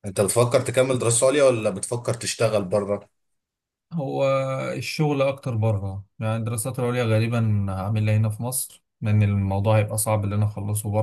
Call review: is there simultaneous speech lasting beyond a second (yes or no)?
no